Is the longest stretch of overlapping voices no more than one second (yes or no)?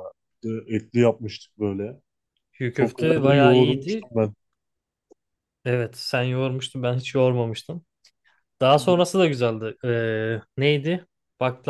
no